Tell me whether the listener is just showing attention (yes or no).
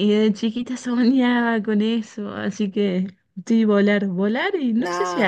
yes